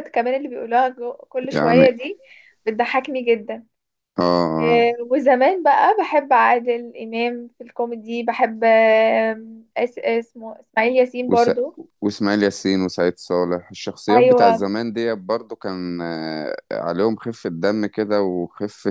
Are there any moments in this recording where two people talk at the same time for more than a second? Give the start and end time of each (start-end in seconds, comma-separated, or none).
none